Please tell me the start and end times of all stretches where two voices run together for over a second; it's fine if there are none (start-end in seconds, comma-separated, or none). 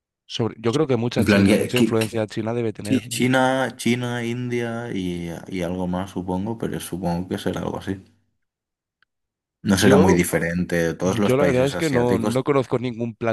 1.2-2.4, 11.0-12.5